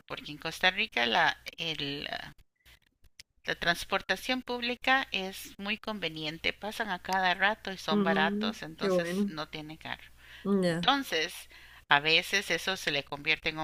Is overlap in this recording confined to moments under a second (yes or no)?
no